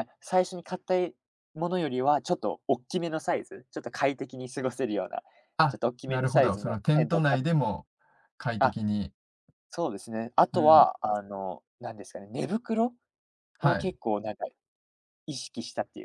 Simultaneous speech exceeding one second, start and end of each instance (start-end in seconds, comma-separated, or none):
5.7-7.4